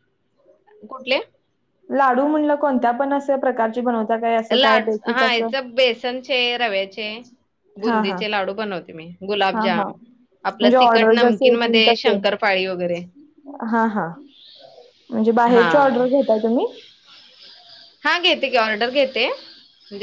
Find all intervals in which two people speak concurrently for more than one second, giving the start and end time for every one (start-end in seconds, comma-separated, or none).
10.6-12.2